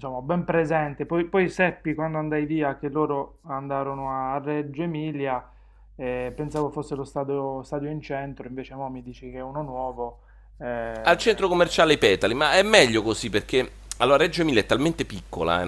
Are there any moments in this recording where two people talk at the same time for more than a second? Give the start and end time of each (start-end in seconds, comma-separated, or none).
none